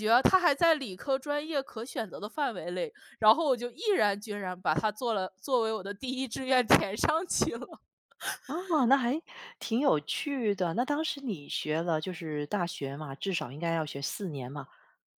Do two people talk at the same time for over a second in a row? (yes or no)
no